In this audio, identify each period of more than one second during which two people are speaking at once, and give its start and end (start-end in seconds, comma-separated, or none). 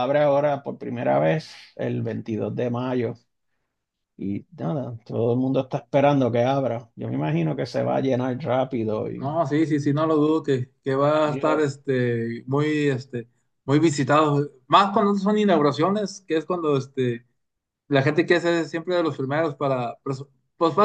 none